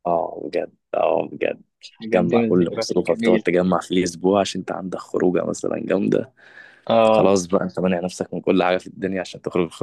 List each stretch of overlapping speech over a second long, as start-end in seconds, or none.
2.1-3.4